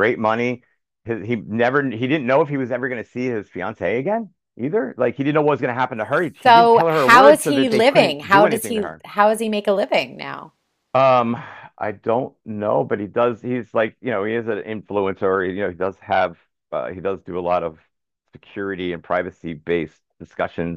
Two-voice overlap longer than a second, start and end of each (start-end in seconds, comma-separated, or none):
6.4-9.0